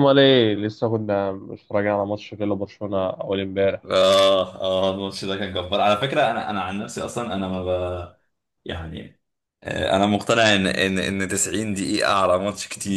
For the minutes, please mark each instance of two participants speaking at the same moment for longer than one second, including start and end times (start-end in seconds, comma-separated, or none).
none